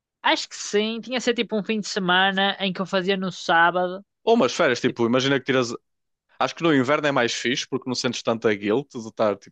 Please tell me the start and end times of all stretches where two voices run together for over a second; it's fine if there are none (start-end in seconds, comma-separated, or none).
none